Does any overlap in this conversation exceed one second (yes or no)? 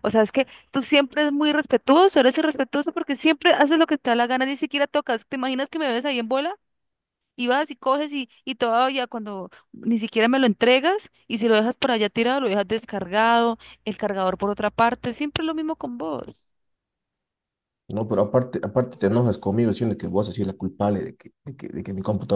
no